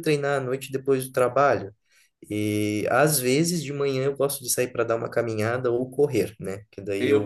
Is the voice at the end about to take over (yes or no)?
yes